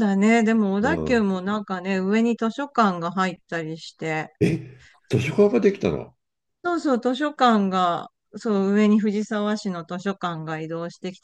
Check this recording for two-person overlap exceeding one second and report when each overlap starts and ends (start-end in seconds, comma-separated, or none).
none